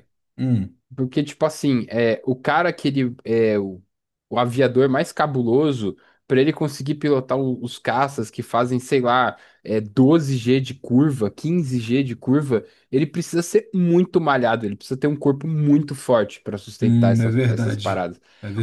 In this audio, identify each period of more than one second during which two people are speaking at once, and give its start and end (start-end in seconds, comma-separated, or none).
16.8-18.0